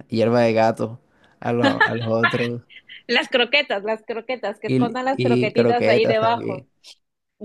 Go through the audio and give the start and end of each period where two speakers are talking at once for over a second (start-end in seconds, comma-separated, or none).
4.7-6.7